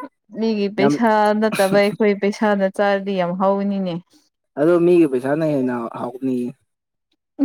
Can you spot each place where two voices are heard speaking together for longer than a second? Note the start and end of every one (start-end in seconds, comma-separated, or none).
none